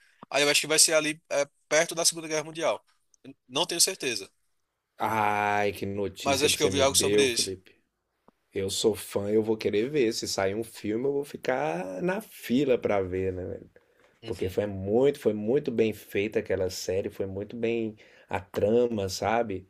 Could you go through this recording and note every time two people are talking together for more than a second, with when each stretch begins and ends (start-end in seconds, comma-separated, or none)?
6.2-7.5